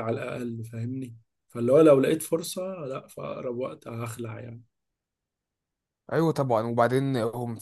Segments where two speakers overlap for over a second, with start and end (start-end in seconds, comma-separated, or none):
none